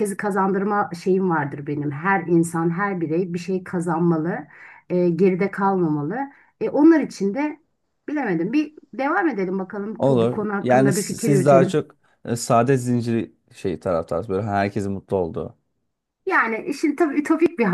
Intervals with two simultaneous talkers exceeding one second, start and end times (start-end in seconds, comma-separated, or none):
10.0-11.8